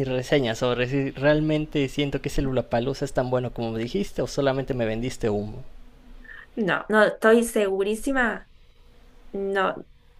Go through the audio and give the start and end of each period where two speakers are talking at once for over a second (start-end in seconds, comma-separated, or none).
none